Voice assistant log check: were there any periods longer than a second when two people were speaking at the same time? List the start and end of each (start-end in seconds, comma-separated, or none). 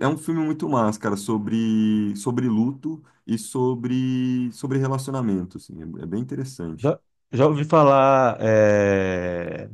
none